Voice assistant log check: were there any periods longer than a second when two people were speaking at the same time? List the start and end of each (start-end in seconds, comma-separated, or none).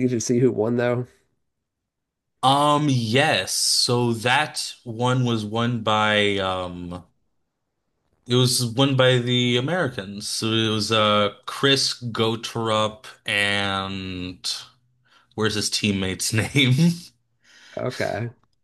none